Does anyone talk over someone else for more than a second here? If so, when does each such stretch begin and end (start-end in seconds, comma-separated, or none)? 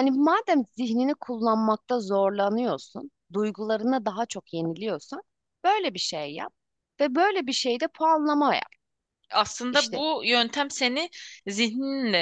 none